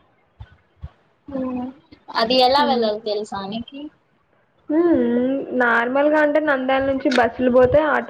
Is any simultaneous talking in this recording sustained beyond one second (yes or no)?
no